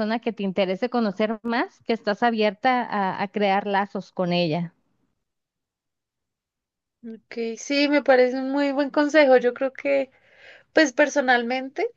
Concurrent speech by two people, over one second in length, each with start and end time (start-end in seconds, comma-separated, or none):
none